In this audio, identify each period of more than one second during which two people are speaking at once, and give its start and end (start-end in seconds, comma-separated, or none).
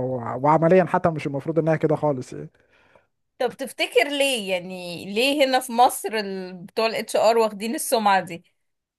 none